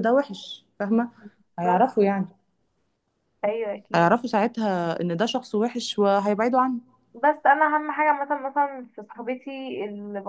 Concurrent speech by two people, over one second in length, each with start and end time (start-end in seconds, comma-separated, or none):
none